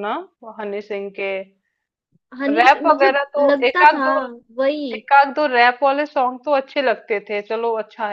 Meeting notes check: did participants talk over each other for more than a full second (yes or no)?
yes